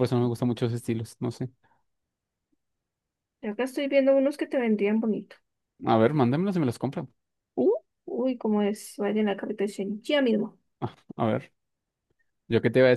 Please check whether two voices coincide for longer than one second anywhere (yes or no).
no